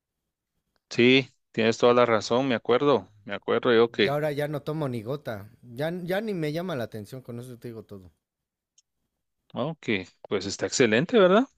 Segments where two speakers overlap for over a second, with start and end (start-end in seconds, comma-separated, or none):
none